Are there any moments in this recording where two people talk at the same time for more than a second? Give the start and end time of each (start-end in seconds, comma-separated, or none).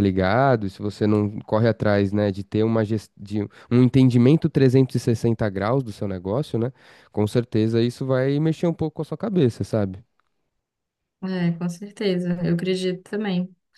none